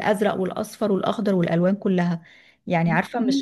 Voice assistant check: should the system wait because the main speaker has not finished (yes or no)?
yes